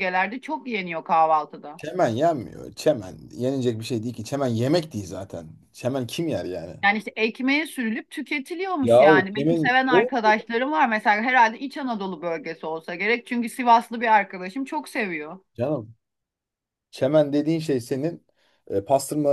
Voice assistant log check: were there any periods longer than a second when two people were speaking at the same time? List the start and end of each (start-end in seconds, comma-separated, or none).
8.8-10.1